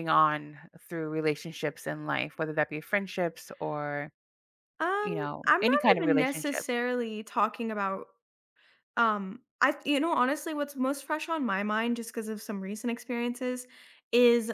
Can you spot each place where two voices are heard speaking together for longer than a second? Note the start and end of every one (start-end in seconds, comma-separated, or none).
5.0-6.7